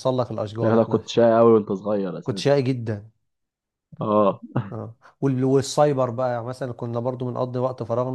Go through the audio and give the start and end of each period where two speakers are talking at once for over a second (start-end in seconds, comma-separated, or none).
none